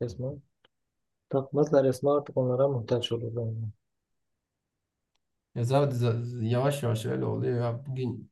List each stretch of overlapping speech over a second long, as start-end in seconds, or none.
none